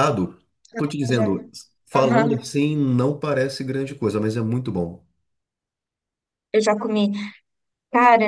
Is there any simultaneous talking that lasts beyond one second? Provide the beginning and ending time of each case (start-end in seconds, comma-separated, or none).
none